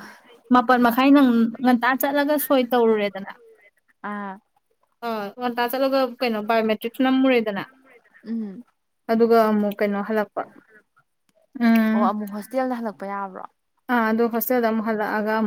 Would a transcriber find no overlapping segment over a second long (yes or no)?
yes